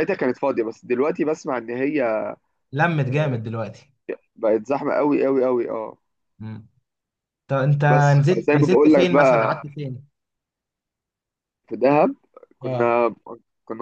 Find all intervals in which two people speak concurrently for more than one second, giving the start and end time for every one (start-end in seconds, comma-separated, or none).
7.9-9.6